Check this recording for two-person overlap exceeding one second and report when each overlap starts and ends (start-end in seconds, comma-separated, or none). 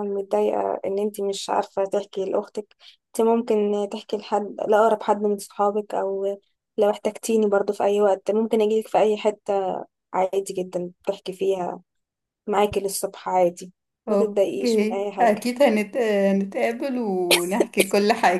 14.1-15.4